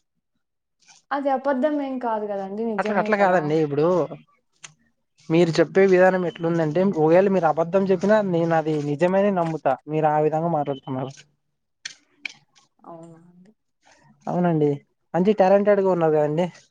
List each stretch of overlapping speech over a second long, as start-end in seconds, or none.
none